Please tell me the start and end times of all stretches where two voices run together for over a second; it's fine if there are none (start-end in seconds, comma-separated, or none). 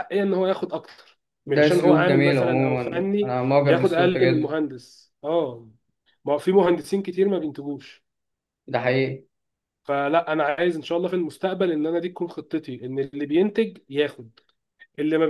1.4-4.6